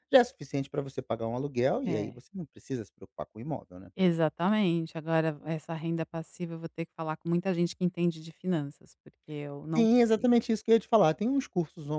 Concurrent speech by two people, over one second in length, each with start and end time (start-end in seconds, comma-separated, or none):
none